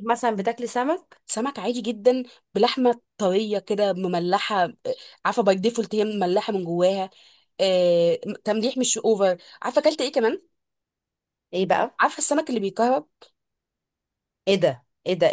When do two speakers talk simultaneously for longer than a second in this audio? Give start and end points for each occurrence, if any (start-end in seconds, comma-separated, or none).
none